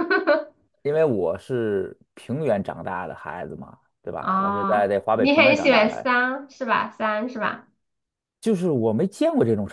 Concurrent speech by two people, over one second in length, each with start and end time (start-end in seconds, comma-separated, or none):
4.2-6.1